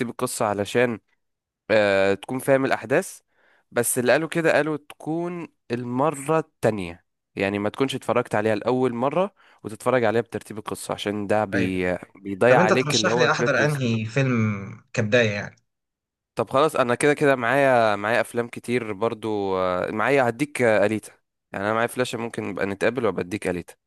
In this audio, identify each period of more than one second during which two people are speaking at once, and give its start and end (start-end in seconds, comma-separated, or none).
12.5-13.9